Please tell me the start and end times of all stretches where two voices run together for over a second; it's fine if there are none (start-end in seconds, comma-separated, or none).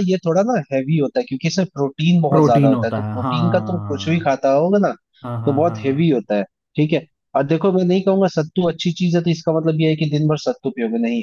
2.3-4.0